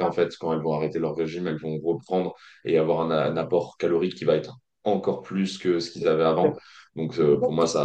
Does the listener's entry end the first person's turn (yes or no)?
no